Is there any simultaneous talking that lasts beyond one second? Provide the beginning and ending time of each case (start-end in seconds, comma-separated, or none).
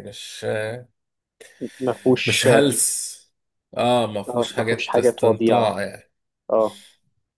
4.3-5.8